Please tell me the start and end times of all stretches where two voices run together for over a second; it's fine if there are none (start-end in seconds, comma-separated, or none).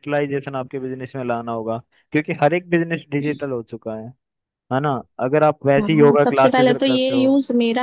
5.8-7.3